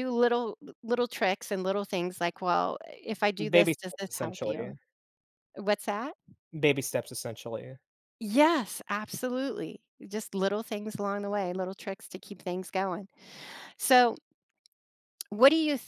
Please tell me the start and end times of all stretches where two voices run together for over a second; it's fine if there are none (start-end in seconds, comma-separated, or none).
3.5-4.7